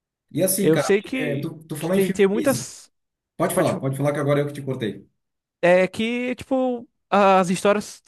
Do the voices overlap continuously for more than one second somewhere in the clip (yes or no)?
yes